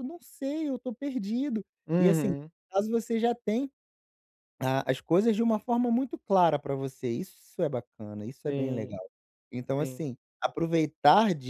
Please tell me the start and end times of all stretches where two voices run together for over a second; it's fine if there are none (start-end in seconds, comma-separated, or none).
none